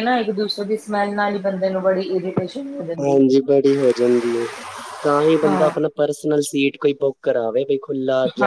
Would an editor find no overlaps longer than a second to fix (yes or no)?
yes